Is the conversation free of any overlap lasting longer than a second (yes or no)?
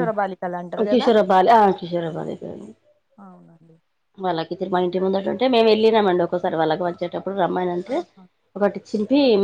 yes